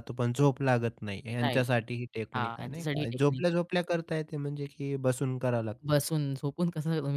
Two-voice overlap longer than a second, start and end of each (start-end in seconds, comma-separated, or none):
2.4-3.6